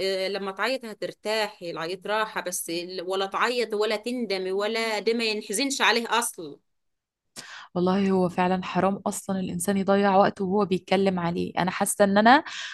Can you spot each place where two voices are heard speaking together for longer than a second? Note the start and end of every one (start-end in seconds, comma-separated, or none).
none